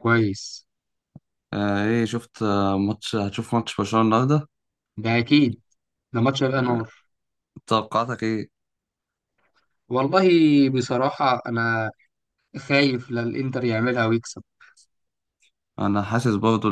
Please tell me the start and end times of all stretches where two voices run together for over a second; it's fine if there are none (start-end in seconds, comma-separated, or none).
none